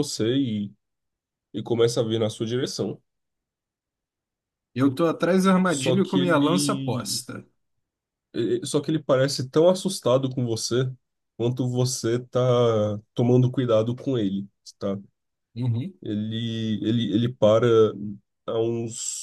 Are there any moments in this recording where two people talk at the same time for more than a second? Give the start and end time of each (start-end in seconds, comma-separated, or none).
5.7-7.2